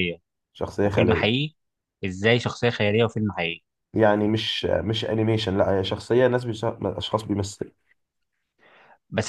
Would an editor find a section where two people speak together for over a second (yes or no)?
no